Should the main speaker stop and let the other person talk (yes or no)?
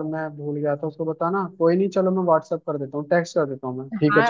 yes